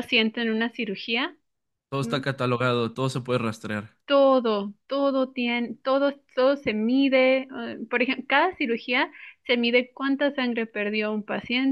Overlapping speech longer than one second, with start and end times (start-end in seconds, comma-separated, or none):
none